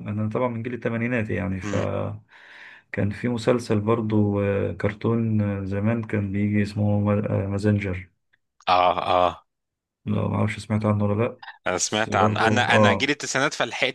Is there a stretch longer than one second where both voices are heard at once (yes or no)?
yes